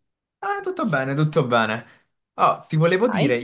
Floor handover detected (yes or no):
no